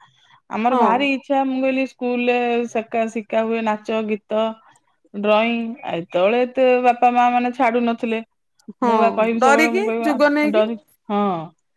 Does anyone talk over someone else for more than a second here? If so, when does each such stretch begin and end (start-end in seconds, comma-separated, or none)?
8.9-10.6